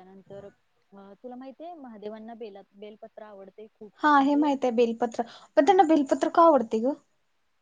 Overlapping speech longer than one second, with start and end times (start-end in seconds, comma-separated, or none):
none